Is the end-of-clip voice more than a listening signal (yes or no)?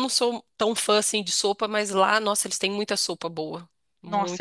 yes